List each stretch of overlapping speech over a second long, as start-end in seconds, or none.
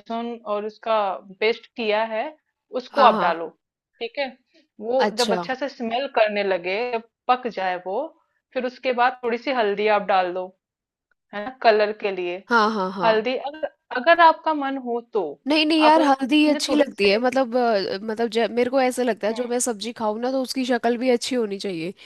15.9-17.2